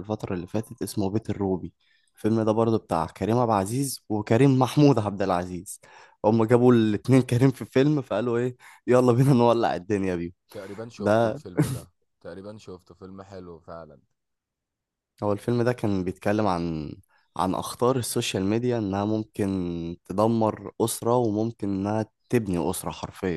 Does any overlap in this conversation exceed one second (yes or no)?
no